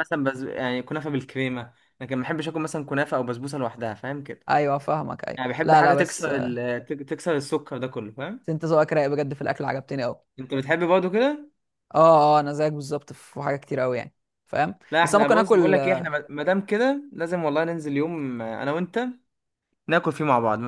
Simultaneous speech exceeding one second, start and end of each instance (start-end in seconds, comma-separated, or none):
5.4-6.6, 14.9-16.1